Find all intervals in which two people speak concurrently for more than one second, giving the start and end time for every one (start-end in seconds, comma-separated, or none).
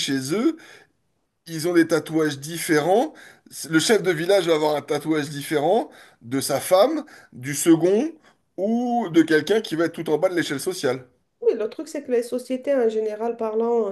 none